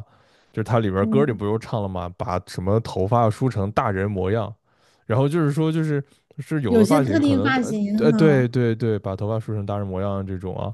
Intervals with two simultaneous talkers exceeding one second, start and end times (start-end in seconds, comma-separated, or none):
6.7-8.5